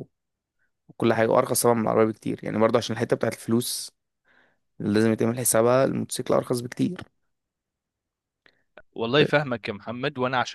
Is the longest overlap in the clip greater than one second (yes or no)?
no